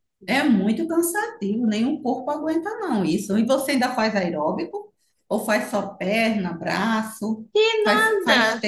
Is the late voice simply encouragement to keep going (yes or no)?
no